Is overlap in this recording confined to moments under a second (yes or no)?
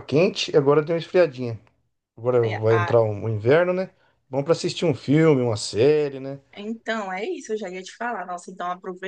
yes